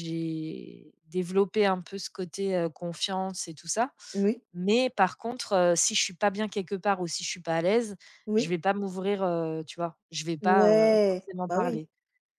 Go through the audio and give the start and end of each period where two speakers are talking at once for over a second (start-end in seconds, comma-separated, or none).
10.4-11.8